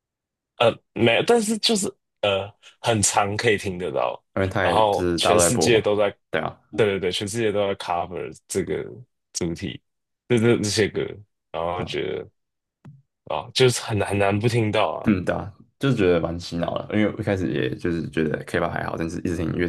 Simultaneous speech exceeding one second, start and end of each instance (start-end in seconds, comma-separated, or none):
4.6-5.9